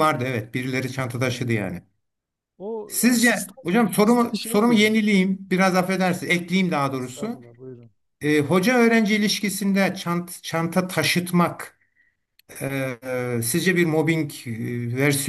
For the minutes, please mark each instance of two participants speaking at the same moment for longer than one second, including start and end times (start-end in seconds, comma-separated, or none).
2.9-5.0